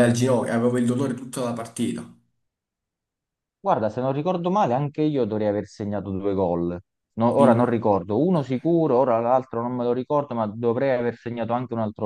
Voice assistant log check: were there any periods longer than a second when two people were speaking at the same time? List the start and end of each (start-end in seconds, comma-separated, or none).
none